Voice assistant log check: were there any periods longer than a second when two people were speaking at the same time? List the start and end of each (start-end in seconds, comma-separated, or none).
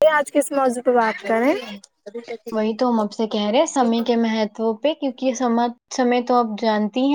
none